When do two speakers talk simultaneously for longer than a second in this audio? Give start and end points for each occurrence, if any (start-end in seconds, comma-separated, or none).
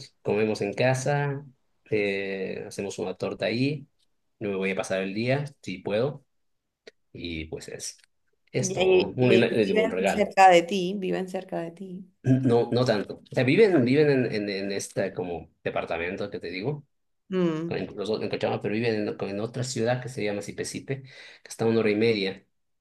8.6-10.3